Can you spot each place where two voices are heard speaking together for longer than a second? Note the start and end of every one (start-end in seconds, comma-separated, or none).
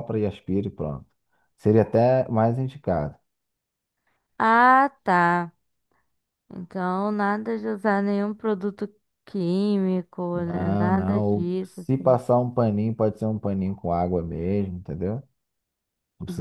10.3-11.8